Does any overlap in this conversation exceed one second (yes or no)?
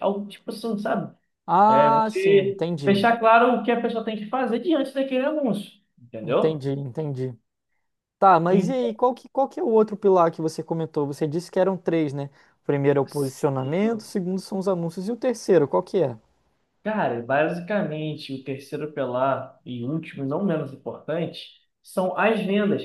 yes